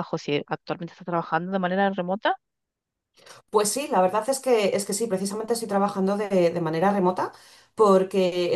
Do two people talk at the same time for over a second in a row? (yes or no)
no